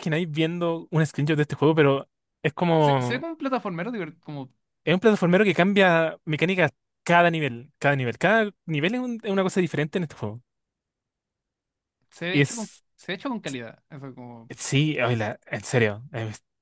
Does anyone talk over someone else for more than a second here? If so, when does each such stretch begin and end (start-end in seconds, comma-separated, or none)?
none